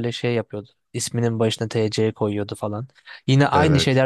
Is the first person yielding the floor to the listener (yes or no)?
no